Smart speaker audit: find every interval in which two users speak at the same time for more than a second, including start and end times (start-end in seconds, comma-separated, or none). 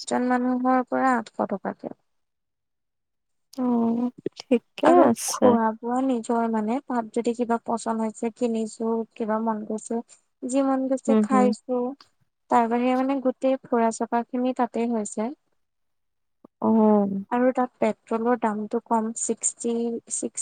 none